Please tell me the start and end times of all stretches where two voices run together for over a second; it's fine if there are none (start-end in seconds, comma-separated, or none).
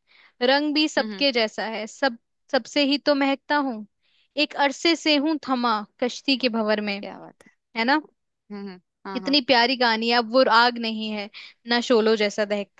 none